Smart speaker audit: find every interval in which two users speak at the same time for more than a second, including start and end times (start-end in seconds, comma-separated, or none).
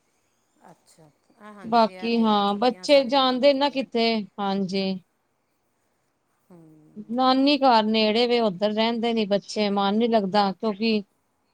1.7-3.8